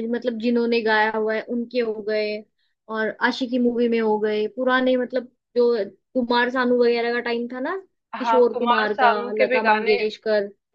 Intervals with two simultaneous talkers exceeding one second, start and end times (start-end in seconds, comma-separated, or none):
8.2-10.0